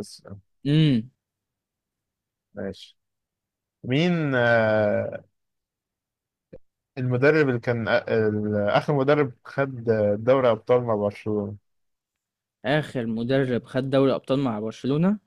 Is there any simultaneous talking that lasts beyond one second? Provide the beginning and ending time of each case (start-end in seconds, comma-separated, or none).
none